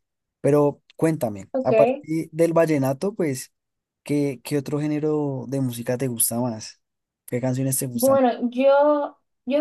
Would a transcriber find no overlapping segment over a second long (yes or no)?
yes